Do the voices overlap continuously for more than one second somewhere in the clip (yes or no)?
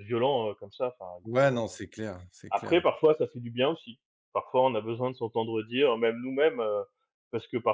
no